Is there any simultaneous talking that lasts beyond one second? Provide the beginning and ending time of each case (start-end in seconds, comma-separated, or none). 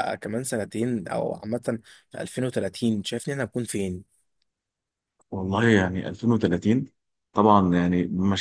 none